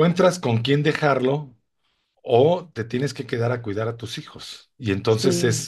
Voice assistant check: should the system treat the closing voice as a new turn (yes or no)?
no